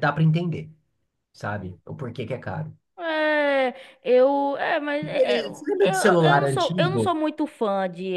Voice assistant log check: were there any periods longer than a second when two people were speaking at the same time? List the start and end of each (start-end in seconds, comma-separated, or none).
5.0-7.1